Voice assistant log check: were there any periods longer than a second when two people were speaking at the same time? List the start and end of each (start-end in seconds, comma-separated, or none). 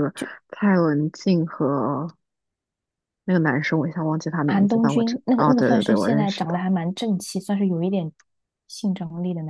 4.5-6.6